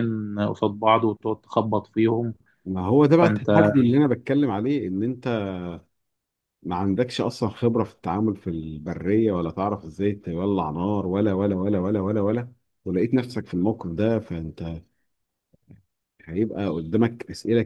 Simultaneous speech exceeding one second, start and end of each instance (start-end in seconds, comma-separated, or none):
none